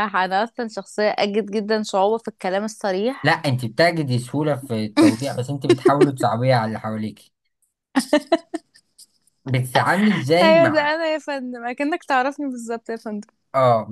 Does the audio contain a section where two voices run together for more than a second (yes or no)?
no